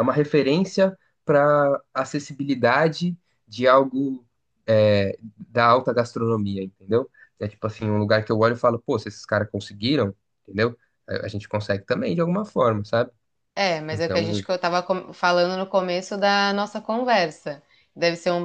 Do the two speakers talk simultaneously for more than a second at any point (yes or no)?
no